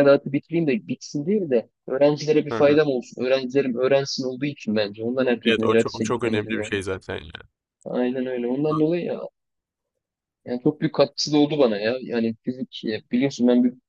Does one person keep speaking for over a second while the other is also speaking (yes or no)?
yes